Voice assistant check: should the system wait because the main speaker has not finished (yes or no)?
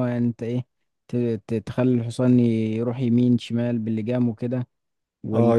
no